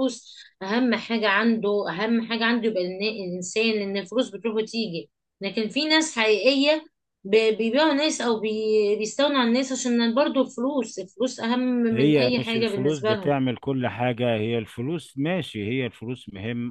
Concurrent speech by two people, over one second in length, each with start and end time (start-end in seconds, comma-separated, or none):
11.9-13.3